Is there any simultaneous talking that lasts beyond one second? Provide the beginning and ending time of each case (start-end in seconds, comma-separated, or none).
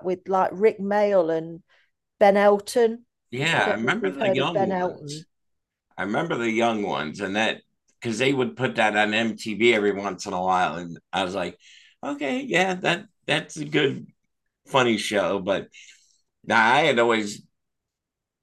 3.6-5.3